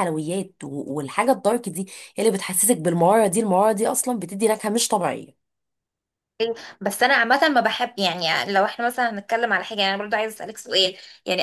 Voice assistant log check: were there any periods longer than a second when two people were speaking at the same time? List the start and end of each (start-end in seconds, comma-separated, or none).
none